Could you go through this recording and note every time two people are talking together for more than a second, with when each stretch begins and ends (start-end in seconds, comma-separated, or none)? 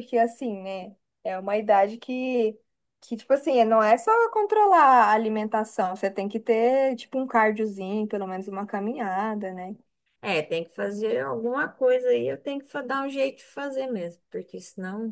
none